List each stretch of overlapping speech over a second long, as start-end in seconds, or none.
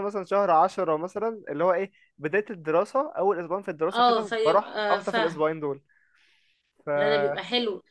3.9-5.4